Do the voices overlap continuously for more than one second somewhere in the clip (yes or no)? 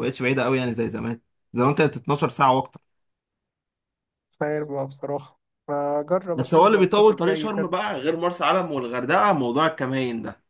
yes